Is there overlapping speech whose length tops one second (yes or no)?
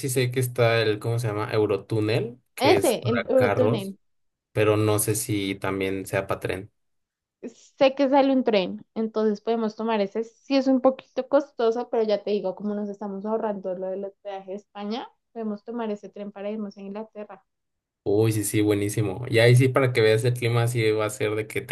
yes